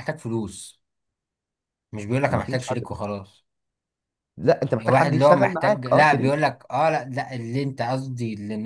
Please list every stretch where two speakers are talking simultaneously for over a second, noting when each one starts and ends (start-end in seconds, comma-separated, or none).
4.7-6.5